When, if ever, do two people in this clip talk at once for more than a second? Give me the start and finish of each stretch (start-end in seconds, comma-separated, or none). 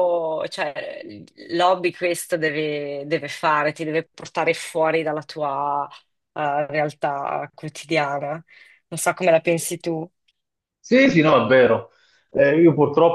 none